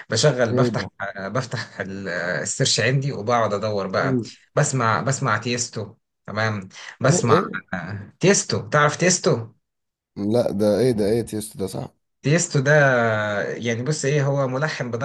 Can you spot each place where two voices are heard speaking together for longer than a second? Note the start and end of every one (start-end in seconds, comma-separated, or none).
none